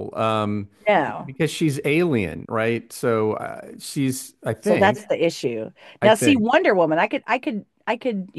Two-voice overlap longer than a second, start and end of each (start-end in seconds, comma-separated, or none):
none